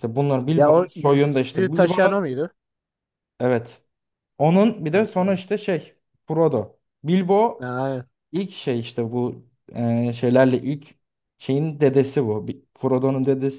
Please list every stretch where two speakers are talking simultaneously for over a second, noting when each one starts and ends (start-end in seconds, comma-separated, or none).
0.5-2.3